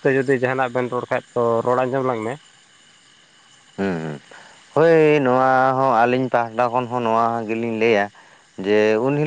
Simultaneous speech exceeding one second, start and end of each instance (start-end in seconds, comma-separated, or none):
none